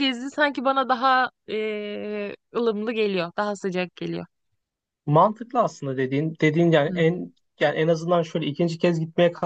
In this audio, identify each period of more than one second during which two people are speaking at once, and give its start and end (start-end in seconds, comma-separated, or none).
none